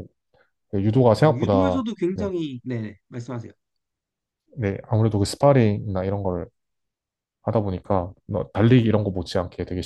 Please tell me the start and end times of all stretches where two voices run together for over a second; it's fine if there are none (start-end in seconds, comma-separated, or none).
0.9-2.3